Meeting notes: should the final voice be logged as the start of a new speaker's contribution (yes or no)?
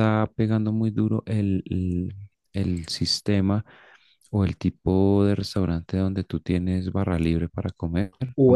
yes